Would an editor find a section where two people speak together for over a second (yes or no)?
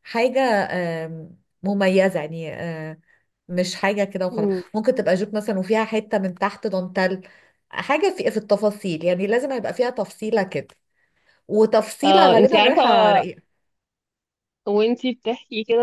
yes